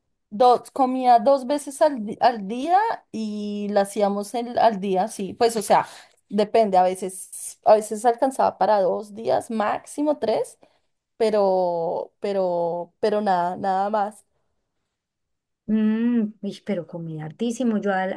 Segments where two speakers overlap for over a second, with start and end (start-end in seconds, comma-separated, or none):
none